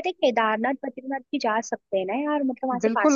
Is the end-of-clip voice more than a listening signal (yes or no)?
yes